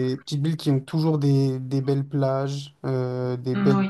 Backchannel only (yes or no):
yes